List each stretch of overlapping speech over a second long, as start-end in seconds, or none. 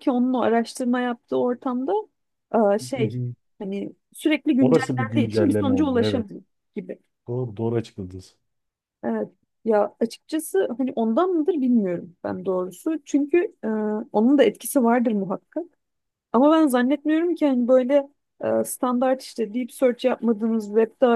4.6-6.3